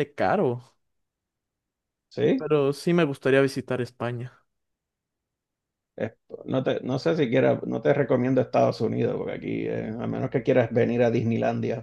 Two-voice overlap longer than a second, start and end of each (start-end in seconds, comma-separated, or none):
none